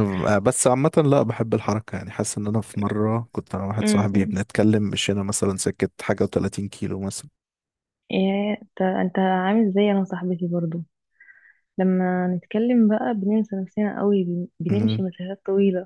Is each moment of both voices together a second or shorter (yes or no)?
yes